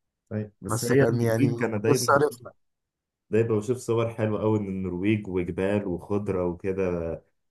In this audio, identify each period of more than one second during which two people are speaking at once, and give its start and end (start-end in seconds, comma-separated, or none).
0.7-2.4